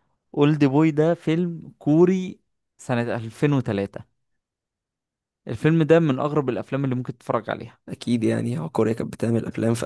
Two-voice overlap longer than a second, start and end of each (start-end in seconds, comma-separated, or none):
none